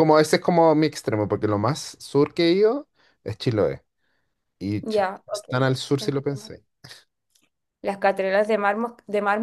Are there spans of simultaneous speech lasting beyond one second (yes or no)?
yes